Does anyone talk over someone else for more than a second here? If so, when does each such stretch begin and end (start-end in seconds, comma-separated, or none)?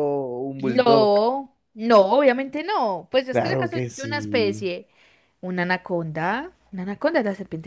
3.3-4.7